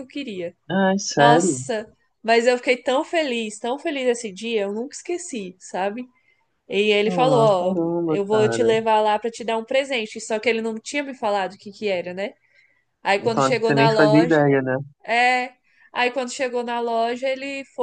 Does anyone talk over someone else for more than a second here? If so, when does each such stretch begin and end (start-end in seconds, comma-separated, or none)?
7.1-8.7, 13.2-14.5